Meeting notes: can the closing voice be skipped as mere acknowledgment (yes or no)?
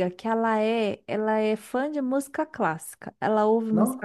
yes